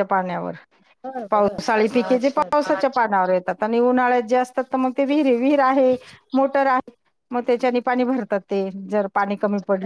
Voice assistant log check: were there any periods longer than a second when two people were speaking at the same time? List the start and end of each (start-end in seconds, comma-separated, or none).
1.3-2.7